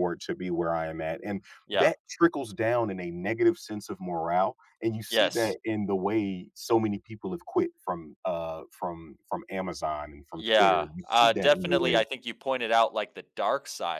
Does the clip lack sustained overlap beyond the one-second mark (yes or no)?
no